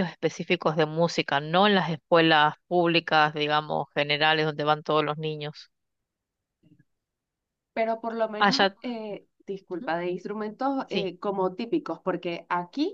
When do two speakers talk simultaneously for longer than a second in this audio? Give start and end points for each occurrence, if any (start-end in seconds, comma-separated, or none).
none